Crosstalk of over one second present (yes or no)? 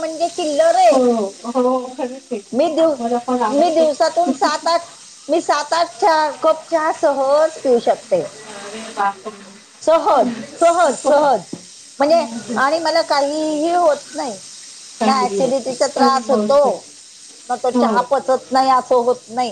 yes